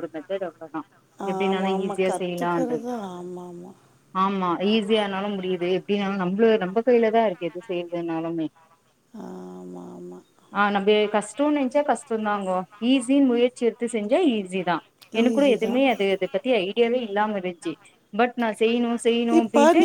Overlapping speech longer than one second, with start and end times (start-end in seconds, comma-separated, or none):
1.3-2.9